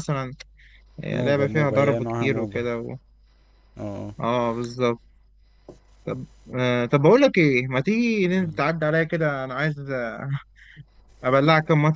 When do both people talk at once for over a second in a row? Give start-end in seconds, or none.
1.2-2.6